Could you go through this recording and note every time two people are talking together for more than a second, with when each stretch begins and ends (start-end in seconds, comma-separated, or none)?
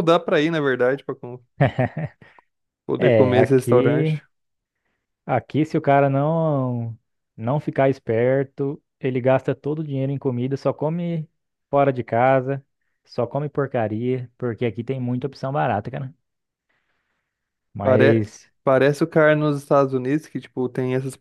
3.0-4.2